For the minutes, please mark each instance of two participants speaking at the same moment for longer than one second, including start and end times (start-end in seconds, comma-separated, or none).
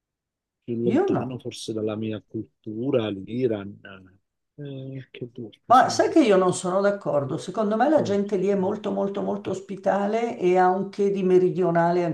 none